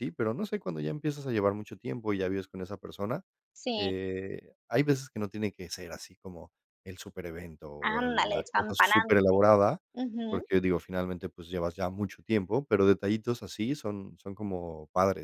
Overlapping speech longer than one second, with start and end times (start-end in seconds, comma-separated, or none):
7.8-9.1